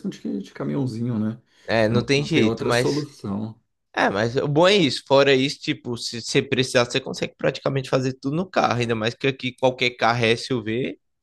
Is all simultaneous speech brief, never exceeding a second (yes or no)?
no